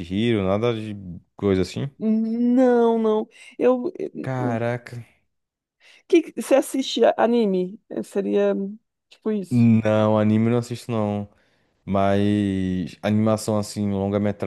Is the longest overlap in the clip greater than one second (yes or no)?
no